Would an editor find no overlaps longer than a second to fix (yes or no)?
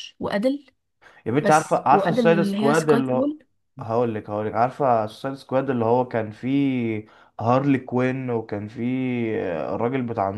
no